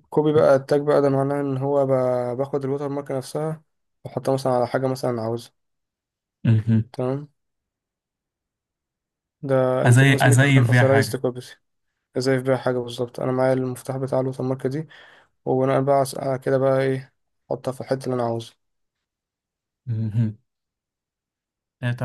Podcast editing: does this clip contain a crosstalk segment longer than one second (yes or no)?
yes